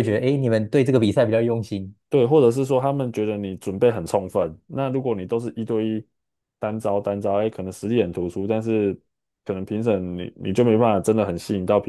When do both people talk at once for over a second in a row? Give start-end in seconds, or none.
none